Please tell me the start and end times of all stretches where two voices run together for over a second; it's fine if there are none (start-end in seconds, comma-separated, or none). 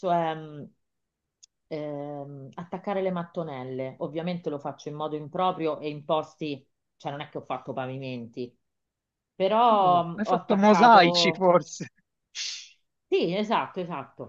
9.7-11.5